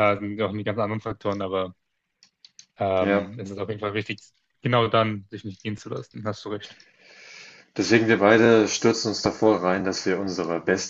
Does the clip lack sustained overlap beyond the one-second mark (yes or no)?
yes